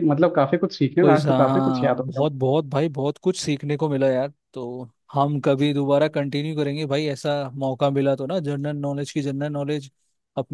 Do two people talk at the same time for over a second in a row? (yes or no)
yes